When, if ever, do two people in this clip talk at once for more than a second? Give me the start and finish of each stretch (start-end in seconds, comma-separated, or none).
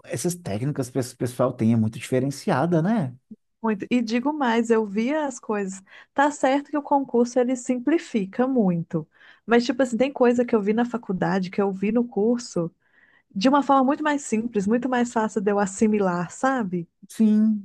none